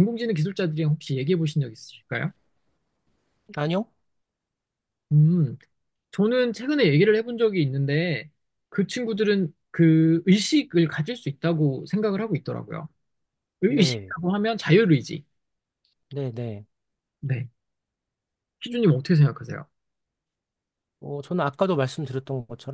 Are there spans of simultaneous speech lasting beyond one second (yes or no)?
no